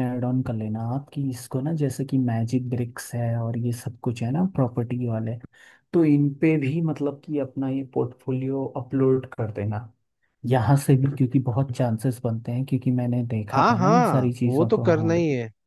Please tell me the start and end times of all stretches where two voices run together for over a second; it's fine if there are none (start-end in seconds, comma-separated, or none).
13.5-15.1